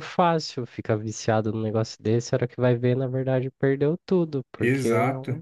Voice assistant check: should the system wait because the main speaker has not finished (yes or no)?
yes